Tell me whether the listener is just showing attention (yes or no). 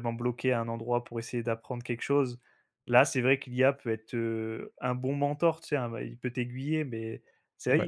yes